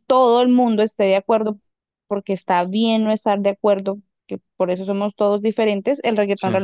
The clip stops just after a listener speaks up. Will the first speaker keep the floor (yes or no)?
yes